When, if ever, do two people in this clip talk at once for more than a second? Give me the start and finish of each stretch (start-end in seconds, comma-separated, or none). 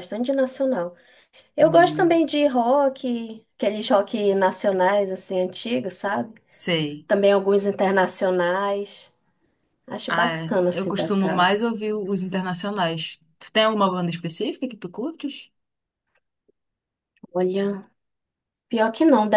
10.1-11.6